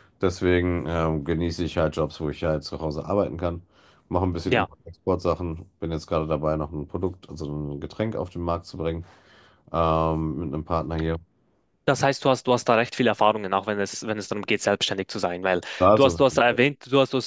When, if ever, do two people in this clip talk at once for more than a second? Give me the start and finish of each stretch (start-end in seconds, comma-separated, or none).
none